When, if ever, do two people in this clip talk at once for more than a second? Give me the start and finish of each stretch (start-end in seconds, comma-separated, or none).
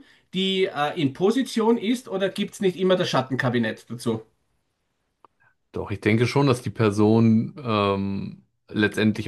none